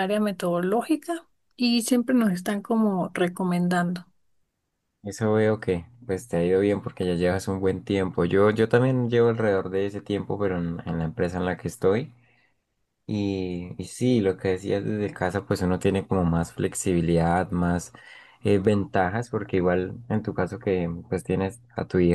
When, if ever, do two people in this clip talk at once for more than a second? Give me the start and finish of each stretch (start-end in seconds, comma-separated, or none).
none